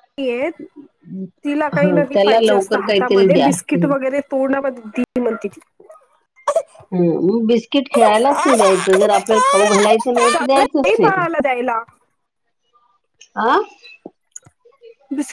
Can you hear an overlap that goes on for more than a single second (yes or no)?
yes